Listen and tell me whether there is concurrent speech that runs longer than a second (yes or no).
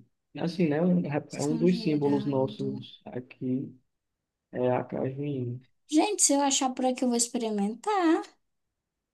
yes